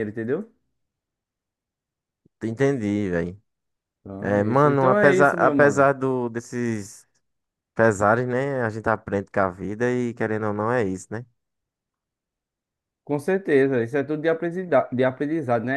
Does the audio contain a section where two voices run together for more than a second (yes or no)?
yes